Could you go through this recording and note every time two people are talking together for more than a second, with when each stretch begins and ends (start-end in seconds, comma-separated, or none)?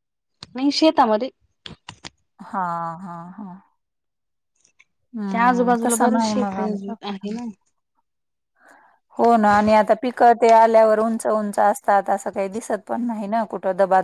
5.3-7.1